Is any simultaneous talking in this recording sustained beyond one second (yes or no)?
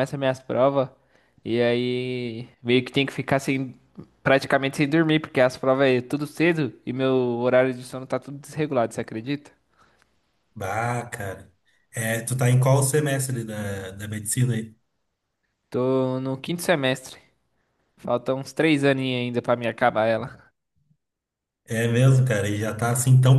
no